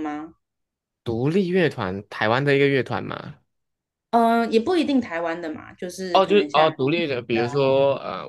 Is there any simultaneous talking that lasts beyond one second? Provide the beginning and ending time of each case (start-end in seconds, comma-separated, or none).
6.1-7.6